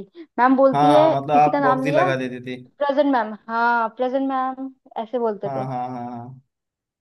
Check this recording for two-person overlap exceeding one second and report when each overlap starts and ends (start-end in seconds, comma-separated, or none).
0.7-2.6